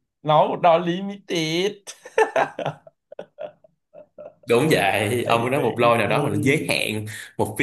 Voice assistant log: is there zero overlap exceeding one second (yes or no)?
no